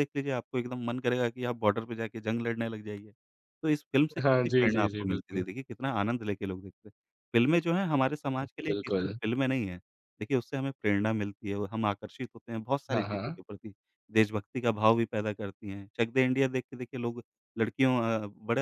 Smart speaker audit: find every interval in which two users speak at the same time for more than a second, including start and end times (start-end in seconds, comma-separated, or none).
4.2-5.4